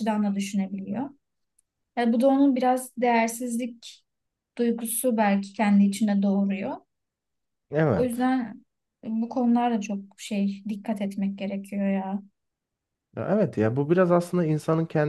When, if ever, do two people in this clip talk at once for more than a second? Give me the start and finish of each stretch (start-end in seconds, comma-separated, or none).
none